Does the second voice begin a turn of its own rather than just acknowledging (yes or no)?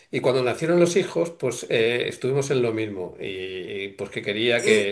no